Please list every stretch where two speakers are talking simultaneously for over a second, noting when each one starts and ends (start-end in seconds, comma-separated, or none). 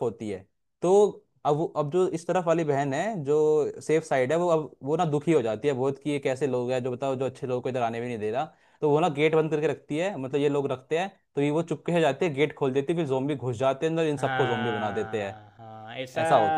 14.2-15.4